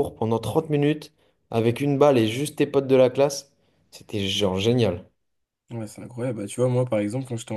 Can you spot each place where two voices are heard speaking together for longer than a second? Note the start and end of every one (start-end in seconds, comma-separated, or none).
none